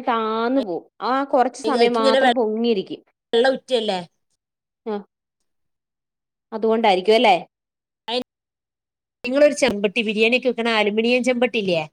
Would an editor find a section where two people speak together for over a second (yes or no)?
no